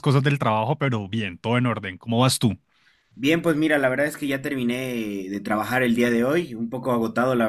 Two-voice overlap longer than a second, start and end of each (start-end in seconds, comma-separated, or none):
none